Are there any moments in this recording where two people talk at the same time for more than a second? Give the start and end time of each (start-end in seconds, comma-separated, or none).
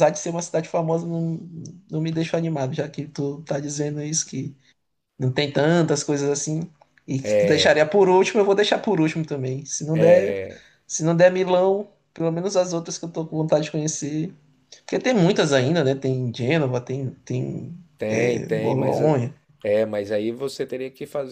18.0-19.2